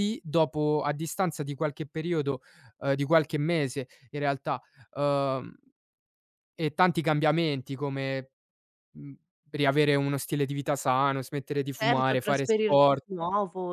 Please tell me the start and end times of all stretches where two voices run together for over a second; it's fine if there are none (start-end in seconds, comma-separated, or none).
11.7-13.1